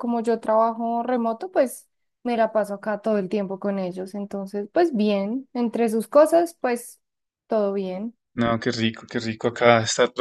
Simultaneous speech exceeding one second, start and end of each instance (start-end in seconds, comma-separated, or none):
none